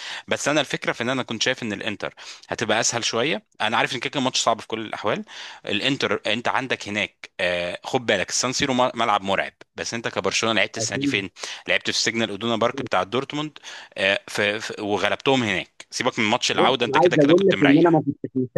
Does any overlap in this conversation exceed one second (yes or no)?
yes